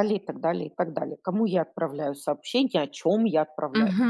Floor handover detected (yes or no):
yes